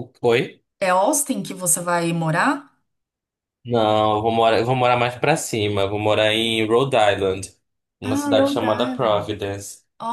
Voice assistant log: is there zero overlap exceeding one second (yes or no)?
no